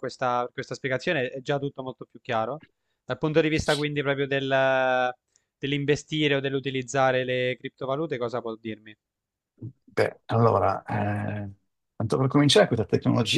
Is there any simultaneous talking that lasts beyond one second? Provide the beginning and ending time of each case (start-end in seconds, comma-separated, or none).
none